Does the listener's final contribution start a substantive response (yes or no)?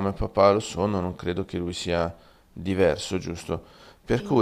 no